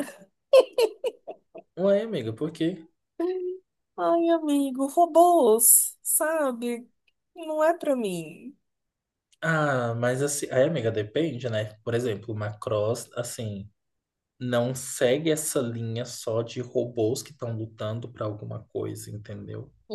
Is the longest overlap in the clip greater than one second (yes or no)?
no